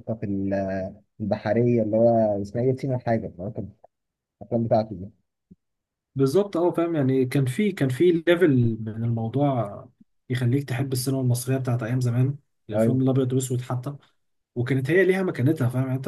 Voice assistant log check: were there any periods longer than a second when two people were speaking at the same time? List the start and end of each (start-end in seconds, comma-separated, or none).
none